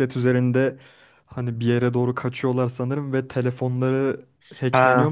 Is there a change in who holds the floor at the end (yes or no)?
yes